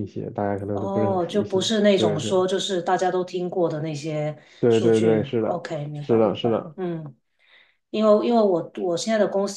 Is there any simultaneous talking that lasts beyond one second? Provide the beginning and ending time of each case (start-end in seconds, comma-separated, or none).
0.7-2.3, 4.6-6.8